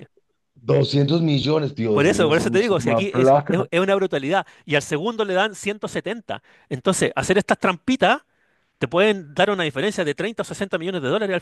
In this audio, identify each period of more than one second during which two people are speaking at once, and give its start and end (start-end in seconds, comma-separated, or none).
1.9-3.7